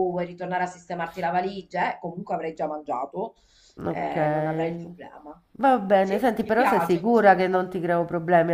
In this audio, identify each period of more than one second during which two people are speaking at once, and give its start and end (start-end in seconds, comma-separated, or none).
6.0-7.8